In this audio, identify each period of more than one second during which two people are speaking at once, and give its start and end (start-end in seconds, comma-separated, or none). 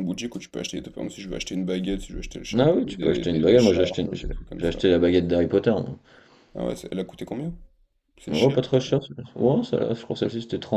2.6-4.8